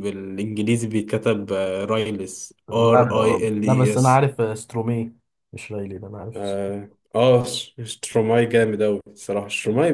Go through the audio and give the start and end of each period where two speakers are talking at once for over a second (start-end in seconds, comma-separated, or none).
2.7-4.2